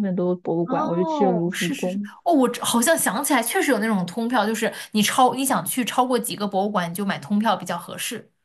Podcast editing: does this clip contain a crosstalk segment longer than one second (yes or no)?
yes